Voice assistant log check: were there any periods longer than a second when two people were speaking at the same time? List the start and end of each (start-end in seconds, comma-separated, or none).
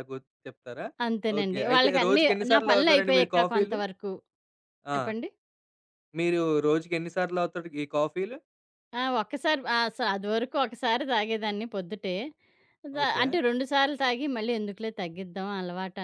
1.4-3.8